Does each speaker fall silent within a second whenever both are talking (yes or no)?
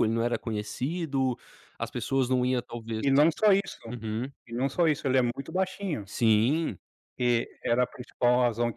yes